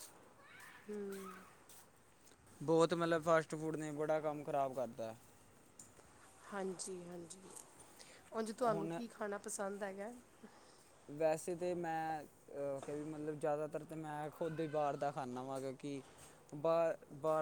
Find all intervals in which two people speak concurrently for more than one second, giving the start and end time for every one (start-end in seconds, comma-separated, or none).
none